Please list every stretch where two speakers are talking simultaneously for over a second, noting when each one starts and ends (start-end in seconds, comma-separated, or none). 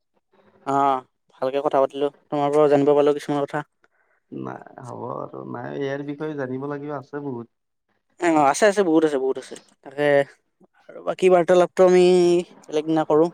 none